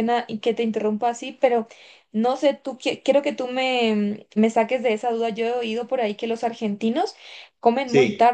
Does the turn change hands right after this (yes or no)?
no